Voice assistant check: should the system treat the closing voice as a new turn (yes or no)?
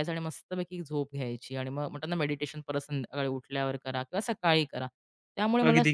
no